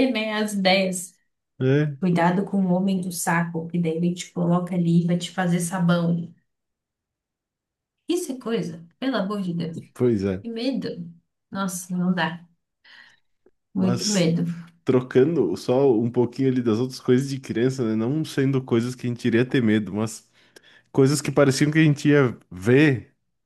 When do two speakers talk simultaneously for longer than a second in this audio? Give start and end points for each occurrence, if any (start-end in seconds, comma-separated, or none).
none